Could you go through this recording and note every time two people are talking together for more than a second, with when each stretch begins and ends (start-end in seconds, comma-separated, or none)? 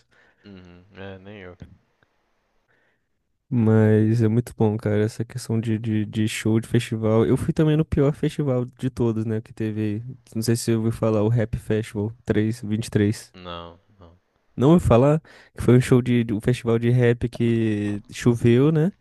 none